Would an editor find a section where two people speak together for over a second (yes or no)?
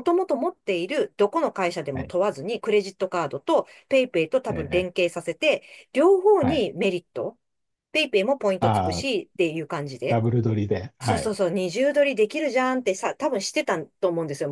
no